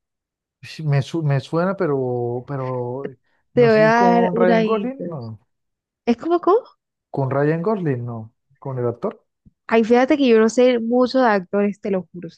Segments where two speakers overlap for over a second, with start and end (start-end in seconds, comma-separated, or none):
3.5-5.2